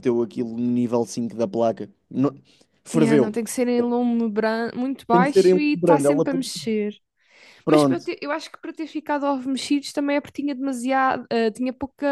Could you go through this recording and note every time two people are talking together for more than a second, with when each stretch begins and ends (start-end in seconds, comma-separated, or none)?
5.1-6.6